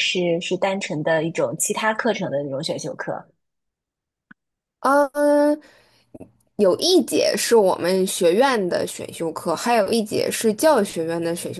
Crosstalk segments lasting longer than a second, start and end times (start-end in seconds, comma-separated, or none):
none